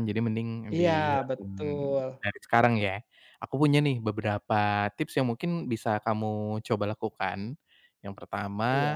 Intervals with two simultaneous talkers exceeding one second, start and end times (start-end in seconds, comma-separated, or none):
0.7-2.2